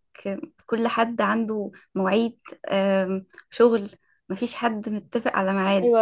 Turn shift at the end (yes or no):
yes